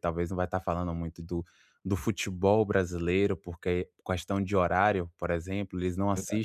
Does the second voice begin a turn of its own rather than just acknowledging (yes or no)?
no